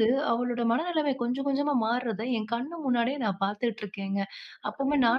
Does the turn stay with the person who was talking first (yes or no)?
yes